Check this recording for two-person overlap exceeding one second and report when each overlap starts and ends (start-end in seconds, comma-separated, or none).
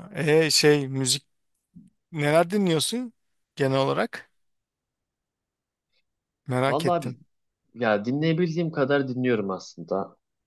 none